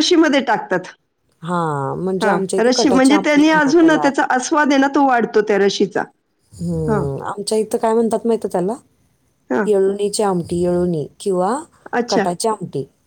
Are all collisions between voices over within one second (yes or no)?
no